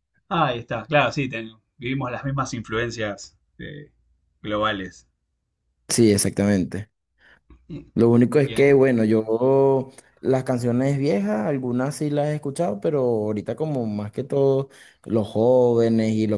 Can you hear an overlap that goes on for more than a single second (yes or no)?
no